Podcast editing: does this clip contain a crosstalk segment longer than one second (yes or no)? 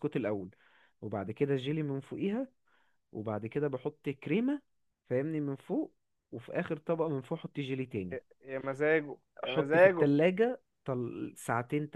no